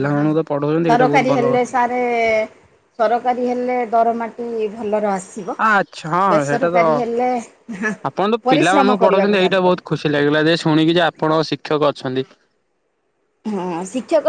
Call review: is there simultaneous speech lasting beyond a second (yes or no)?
yes